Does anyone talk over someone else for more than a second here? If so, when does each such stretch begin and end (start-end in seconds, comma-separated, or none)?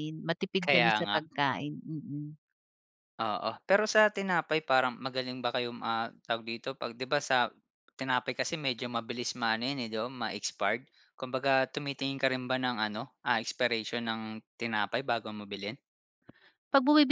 none